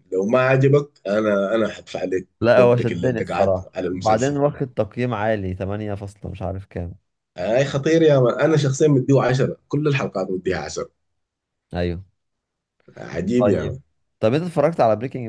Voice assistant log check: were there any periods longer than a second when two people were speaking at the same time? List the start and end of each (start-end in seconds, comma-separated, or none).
2.4-4.4